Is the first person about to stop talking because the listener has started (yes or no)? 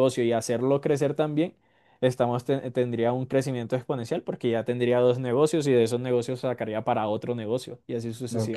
yes